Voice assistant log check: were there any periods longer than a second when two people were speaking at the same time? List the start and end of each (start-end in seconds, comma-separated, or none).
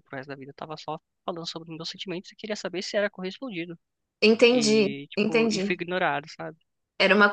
4.5-5.8